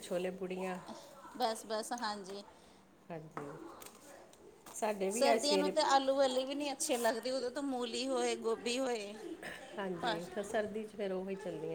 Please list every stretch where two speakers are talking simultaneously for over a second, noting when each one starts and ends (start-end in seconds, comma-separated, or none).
none